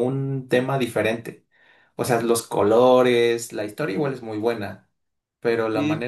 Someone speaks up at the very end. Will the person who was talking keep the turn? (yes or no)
yes